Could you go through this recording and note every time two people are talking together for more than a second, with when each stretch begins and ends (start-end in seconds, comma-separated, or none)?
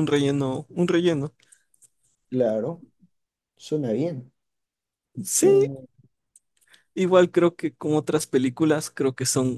none